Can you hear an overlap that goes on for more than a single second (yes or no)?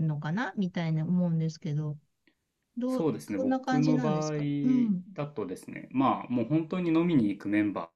yes